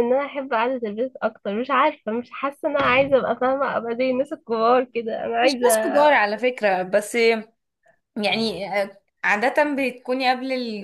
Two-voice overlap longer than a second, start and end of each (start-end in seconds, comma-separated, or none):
none